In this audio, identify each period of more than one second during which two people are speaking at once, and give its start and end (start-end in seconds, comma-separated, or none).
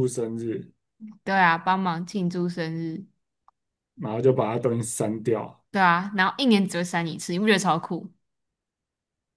none